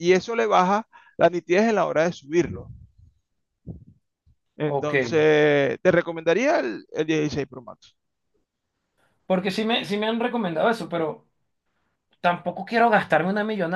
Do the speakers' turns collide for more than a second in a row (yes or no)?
no